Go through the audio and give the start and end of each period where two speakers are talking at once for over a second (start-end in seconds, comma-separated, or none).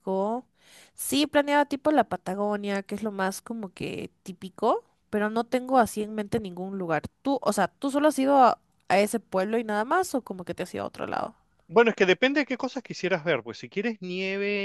none